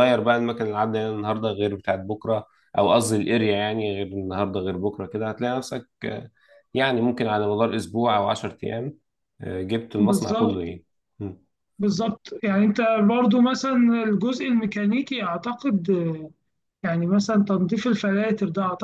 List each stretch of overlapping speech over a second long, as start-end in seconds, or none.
none